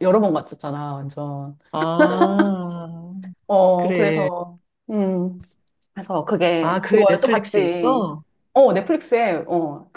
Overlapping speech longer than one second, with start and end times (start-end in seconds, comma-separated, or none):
6.6-8.0